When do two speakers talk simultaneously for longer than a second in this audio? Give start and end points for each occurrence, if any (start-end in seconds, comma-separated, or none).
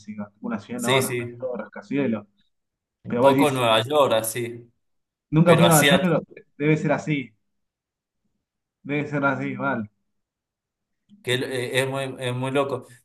none